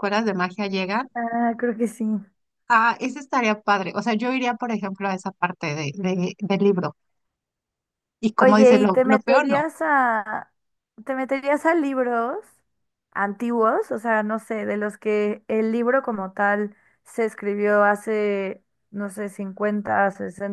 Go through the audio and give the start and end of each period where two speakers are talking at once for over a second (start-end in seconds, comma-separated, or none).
8.4-9.7